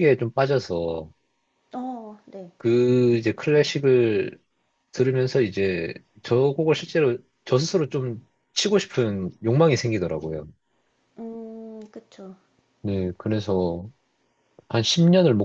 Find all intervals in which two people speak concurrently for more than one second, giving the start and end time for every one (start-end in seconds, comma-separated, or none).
none